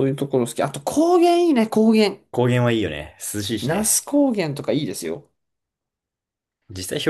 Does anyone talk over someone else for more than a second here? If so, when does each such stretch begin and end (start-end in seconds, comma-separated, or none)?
none